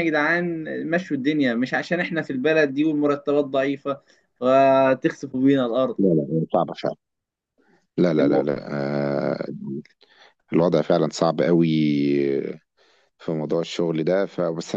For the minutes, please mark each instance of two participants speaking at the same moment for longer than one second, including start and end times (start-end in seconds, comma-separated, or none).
none